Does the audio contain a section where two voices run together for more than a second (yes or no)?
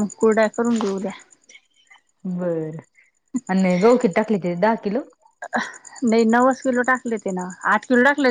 no